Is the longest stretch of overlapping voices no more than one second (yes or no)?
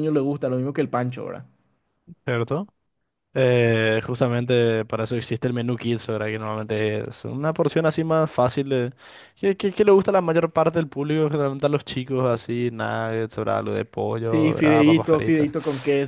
no